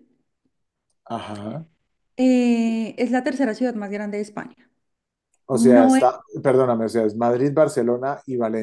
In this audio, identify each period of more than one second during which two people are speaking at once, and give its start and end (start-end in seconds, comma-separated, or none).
none